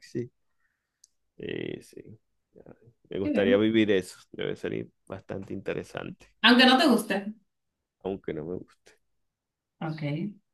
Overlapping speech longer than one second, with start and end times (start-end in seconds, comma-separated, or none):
none